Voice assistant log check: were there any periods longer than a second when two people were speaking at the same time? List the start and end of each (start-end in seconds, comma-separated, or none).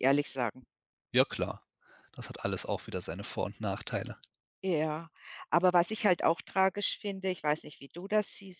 none